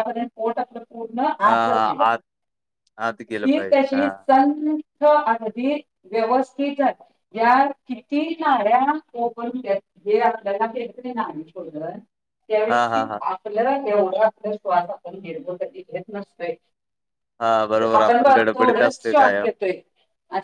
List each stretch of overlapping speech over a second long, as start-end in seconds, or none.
17.8-19.4